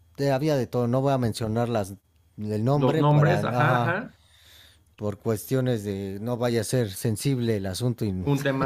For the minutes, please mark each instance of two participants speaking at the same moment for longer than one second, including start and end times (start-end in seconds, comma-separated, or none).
2.8-4.0